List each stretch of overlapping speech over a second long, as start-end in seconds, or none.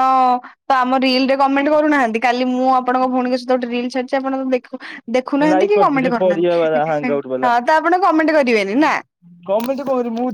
5.4-7.5